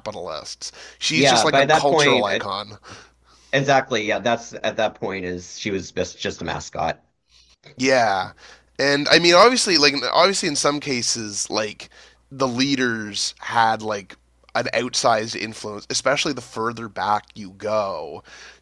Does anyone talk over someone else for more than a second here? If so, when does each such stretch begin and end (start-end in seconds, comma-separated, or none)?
1.1-2.4